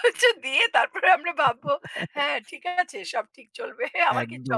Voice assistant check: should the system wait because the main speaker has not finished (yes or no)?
no